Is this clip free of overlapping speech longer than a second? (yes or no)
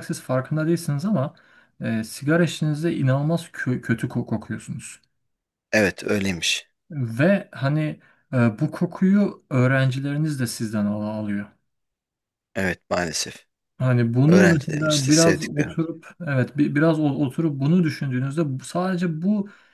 no